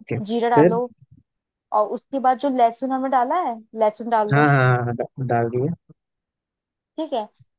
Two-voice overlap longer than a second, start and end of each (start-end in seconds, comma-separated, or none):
none